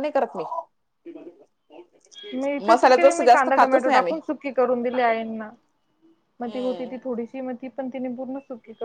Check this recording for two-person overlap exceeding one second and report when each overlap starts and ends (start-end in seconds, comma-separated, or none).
2.7-4.2